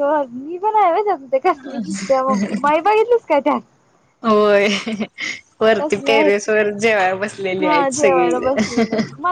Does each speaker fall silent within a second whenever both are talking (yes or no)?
no